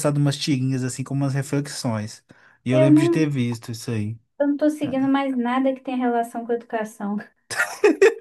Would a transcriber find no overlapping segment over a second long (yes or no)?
yes